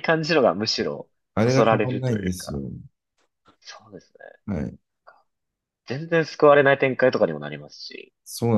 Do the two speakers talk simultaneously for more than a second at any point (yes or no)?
yes